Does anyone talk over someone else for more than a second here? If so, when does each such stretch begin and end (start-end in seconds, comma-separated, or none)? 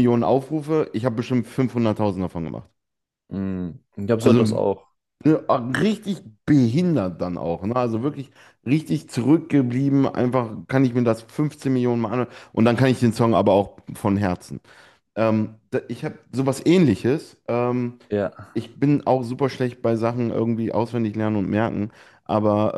none